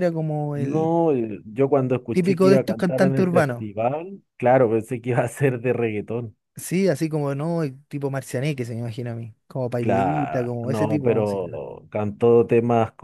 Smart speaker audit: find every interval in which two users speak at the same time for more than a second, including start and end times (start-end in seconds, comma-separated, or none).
2.1-3.6, 9.8-11.6